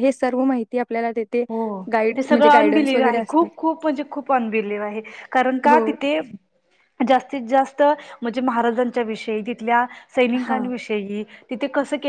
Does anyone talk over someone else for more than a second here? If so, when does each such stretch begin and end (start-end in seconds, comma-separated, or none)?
2.1-3.5